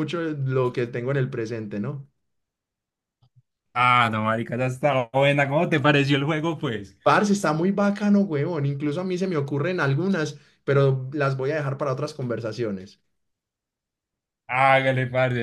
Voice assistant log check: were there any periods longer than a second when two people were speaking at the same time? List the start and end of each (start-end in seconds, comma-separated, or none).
none